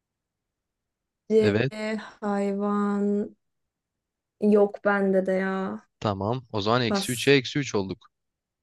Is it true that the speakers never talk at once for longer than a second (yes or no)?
yes